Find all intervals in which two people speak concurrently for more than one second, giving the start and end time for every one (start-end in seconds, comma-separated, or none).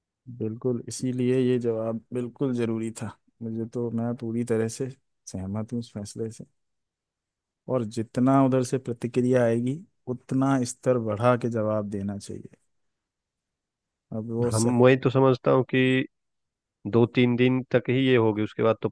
none